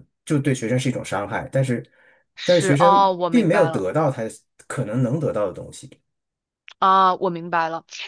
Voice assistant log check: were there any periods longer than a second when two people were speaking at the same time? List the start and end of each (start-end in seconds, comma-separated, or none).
2.4-3.9